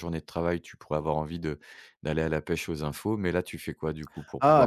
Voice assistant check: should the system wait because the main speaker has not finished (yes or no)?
no